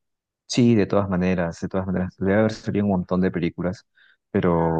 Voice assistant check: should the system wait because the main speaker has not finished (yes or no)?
no